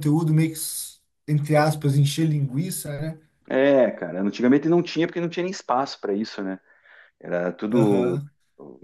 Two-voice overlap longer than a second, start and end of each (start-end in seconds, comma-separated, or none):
none